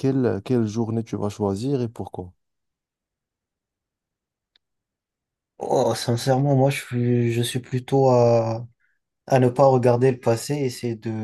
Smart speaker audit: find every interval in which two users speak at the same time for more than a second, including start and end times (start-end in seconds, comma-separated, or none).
none